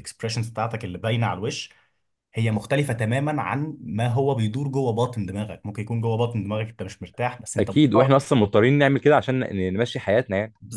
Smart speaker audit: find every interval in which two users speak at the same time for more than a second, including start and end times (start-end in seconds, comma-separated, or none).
none